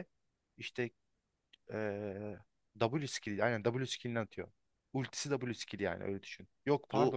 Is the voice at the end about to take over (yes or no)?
no